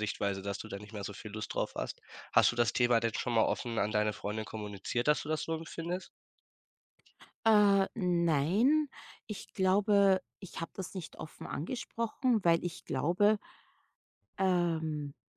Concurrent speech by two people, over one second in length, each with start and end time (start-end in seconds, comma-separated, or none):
none